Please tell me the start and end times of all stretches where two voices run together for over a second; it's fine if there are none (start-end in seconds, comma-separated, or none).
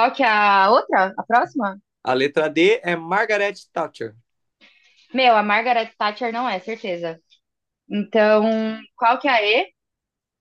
none